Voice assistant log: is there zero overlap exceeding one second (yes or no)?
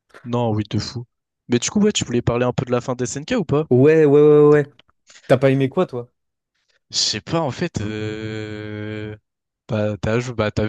yes